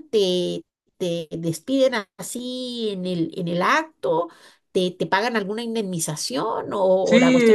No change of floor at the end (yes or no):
no